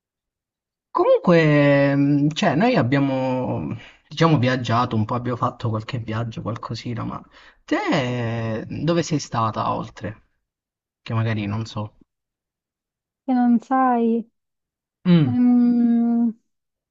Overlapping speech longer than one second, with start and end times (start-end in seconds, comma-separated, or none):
none